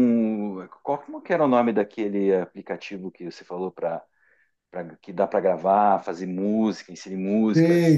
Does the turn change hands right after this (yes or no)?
yes